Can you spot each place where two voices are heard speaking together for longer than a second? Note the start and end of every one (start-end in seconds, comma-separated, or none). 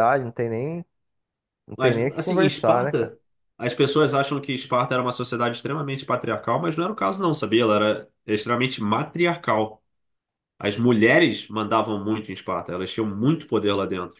1.8-3.1